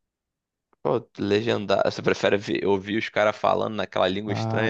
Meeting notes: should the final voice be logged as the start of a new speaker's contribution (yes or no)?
yes